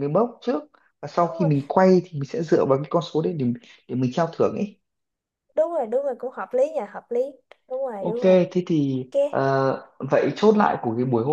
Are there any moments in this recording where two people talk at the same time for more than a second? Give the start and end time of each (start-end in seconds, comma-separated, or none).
none